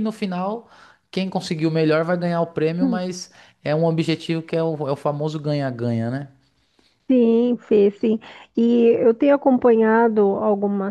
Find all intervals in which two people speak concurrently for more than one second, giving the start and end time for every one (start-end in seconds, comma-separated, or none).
none